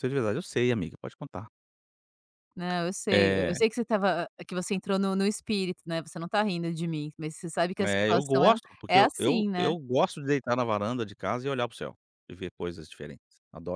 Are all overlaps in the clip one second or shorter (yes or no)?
no